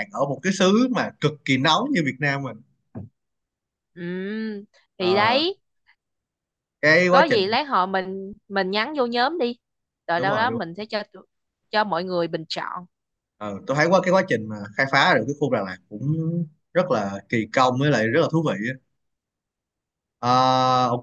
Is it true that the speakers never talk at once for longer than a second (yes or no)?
yes